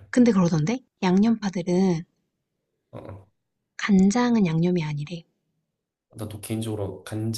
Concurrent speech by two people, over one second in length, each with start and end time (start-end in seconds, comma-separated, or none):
none